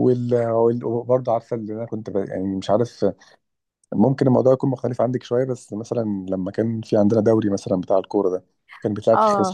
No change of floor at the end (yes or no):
no